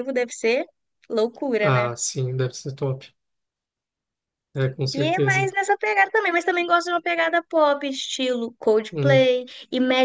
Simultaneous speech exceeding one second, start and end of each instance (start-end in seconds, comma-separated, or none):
none